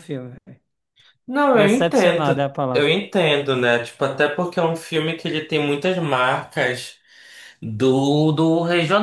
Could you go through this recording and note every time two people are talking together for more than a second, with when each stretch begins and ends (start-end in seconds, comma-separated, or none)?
1.5-2.9